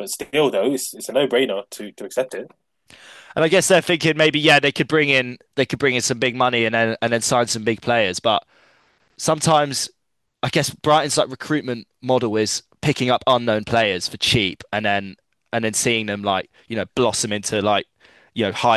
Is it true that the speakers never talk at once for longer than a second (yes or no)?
yes